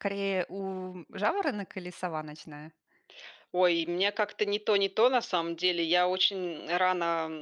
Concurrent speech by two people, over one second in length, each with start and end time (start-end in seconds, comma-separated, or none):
none